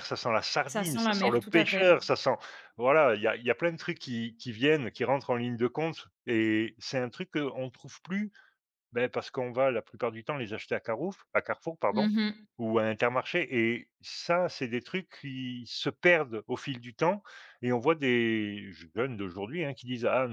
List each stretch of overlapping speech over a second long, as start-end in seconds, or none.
0.7-1.9